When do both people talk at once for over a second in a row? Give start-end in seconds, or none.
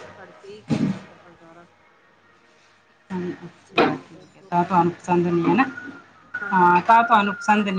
3.7-5.1